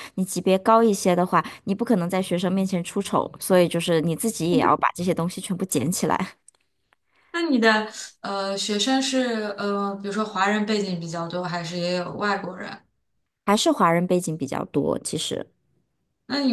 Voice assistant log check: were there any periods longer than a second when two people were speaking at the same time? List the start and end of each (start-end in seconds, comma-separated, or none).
none